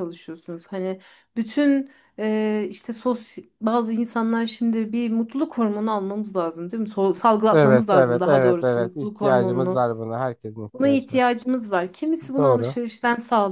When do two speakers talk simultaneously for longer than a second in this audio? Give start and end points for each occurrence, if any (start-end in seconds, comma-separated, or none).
7.5-9.8